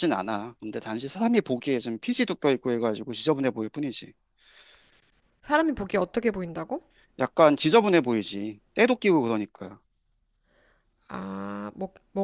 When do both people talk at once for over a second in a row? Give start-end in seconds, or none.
none